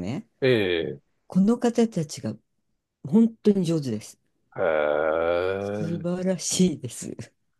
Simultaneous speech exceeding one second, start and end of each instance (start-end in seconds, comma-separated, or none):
none